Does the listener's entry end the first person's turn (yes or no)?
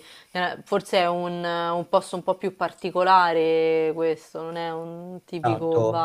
yes